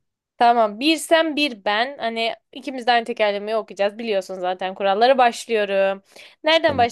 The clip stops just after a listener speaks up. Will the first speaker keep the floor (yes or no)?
yes